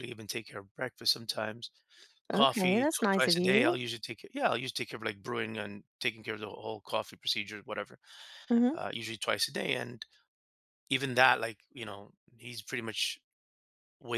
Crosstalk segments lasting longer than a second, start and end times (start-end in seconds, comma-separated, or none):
2.3-3.8